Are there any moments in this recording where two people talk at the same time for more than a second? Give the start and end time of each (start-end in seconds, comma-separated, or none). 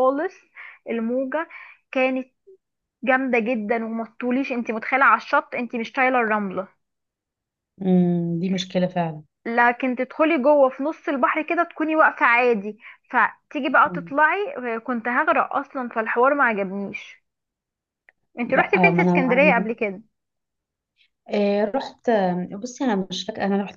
18.5-19.8